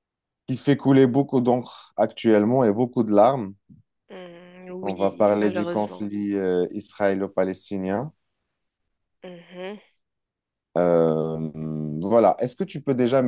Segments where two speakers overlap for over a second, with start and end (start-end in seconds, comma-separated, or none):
4.8-6.1